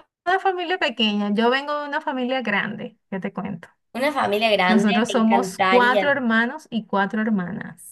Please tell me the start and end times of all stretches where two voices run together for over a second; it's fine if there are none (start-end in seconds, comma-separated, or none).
4.7-6.1